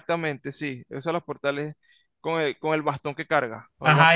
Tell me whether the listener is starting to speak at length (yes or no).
yes